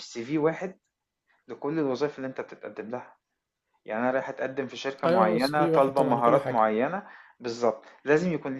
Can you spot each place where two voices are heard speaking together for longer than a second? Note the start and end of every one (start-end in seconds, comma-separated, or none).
5.0-6.7